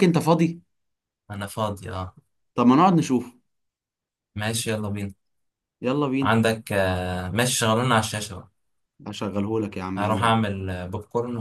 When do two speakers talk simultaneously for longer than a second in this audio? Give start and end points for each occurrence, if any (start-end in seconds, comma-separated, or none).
none